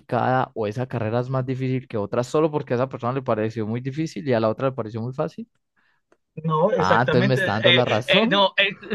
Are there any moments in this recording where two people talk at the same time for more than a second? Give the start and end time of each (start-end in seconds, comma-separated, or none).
6.8-8.4